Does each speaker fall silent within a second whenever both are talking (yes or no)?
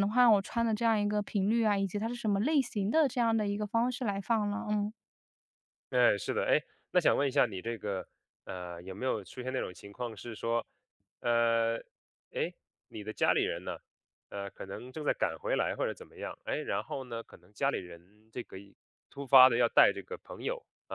yes